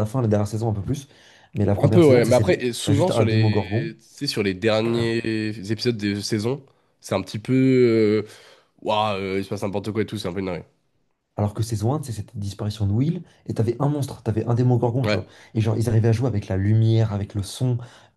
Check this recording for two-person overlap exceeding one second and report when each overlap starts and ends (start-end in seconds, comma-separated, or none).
1.8-3.9